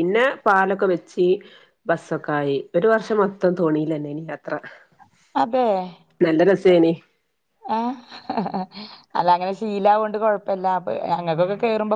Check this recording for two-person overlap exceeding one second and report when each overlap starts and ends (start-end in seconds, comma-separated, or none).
none